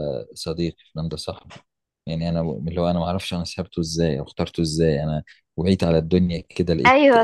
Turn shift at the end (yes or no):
yes